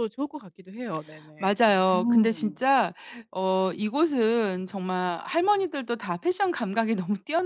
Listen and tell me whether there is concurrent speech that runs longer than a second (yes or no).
yes